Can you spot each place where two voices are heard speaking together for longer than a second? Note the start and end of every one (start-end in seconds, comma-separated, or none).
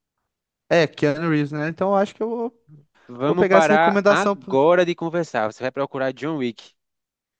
3.2-4.6